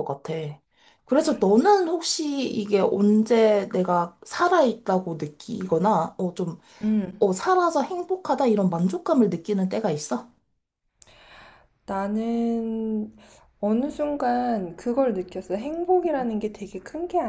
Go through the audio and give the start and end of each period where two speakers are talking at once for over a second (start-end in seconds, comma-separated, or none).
none